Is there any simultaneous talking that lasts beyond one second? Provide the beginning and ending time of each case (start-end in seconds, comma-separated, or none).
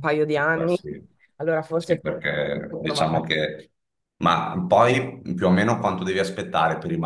1.8-3.2